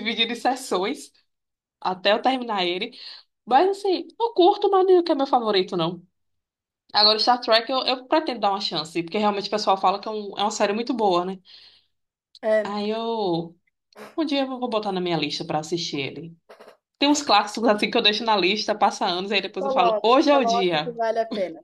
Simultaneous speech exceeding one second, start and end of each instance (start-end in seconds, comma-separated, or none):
19.6-20.9